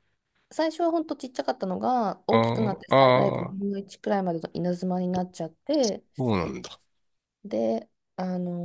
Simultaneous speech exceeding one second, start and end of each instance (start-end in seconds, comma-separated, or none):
2.3-3.5